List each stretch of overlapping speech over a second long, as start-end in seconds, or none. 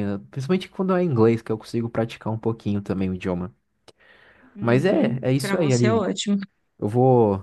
4.6-6.0